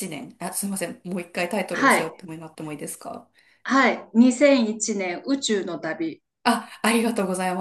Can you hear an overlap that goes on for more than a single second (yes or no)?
no